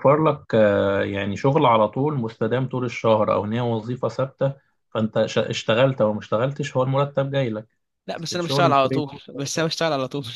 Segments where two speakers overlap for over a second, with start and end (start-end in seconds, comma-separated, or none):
8.1-9.7